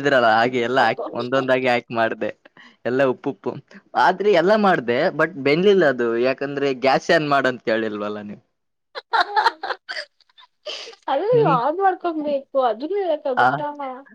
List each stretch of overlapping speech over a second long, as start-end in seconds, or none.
none